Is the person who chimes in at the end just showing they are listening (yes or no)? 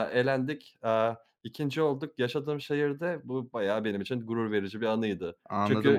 no